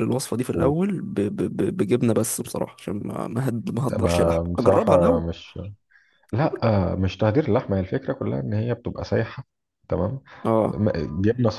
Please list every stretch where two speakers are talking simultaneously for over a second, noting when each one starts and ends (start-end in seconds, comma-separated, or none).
4.0-5.3